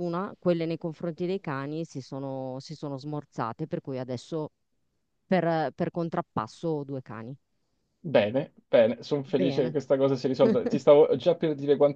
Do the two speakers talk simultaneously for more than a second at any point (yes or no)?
no